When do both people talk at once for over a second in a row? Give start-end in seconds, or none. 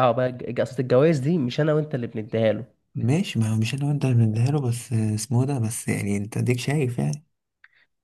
none